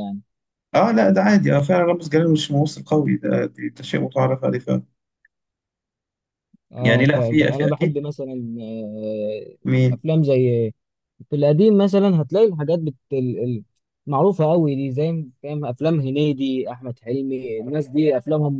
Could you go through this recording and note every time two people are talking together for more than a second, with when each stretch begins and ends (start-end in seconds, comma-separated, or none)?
6.8-8.0